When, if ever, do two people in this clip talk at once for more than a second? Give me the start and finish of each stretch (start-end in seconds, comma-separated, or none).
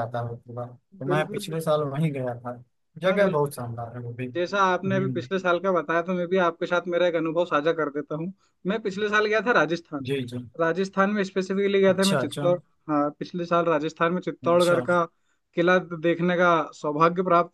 none